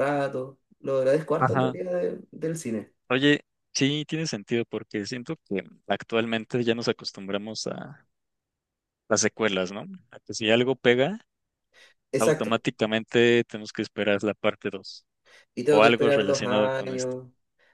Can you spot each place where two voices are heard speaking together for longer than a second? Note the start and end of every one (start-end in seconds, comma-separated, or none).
15.7-17.2